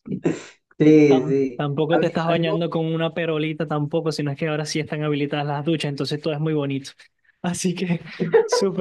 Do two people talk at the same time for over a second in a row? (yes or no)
yes